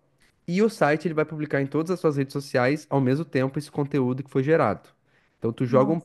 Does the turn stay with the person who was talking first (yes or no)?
yes